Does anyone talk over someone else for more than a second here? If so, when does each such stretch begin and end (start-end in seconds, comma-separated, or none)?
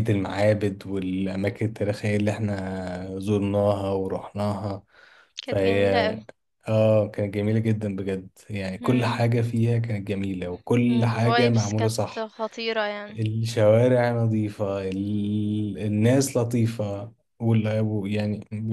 10.9-12.3